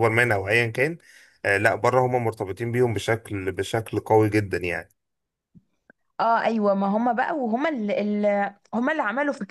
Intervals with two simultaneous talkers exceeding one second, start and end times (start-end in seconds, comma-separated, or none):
none